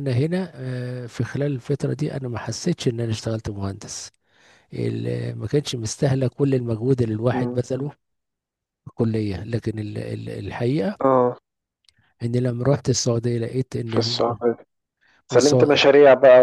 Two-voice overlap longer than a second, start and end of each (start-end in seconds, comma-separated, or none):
none